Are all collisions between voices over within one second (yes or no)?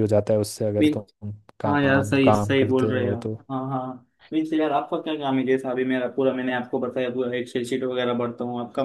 no